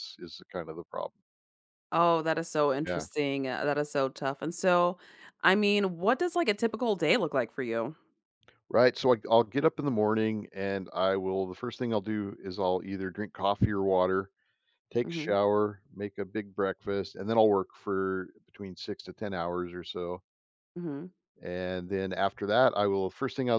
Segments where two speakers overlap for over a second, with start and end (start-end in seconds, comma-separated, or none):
none